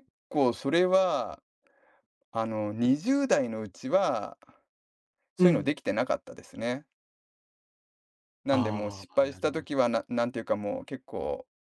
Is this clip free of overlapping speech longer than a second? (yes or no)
no